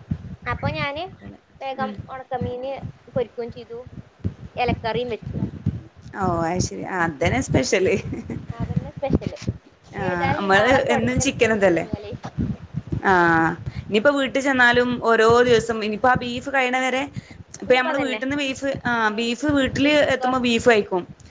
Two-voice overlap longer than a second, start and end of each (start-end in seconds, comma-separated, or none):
10.1-11.8